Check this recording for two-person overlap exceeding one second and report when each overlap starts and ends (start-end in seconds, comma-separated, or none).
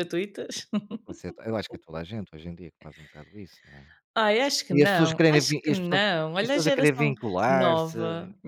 4.7-8.0